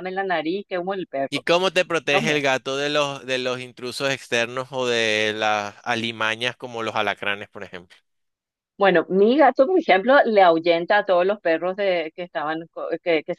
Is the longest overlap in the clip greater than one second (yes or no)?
no